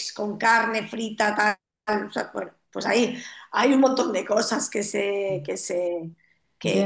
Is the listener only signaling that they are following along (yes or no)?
yes